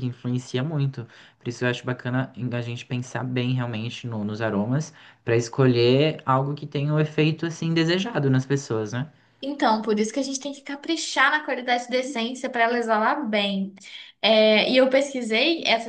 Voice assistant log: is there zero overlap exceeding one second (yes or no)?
yes